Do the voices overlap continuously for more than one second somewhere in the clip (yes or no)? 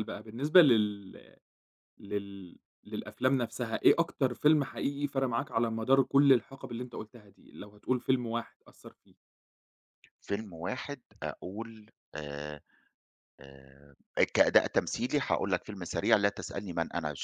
no